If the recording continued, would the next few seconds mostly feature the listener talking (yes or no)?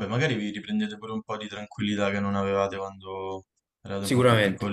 yes